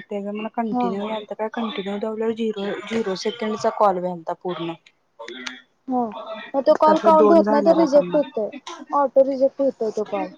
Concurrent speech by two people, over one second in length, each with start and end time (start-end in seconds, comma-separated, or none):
6.9-8.3